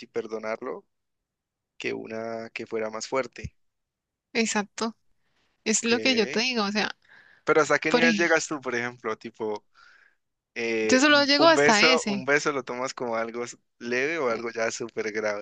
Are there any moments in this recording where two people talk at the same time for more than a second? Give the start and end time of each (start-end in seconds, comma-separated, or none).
10.8-12.2